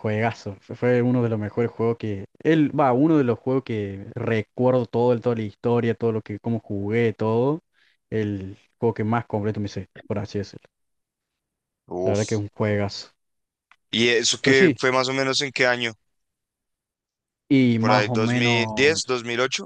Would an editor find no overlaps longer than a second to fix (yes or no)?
no